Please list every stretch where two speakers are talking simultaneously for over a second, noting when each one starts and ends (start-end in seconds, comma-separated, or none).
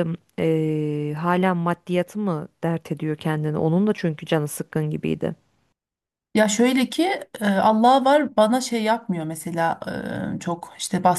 none